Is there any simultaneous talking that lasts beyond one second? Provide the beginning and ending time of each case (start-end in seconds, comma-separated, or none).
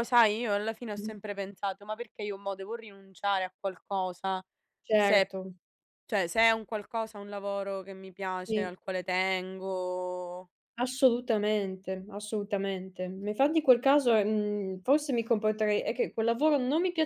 none